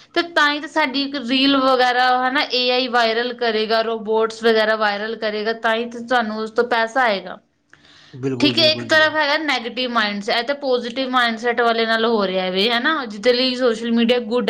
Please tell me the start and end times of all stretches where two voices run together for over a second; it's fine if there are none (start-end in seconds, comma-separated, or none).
8.4-9.8